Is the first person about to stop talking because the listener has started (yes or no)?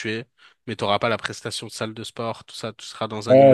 yes